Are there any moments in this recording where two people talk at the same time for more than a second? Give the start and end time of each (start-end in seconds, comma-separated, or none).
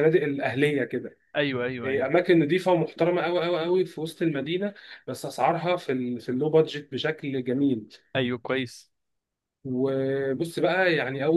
none